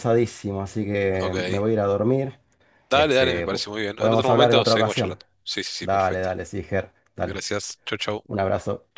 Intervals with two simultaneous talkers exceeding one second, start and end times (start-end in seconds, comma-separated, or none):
2.9-5.2